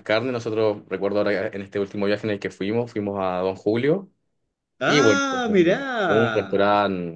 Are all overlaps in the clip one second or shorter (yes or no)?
no